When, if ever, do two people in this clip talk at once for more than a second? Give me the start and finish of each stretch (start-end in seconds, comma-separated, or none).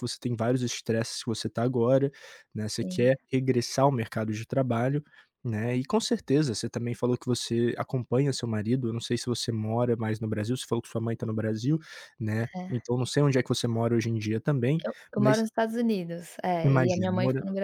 none